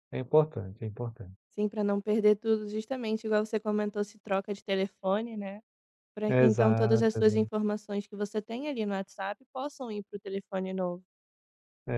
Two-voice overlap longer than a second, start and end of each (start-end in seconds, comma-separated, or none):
6.3-7.5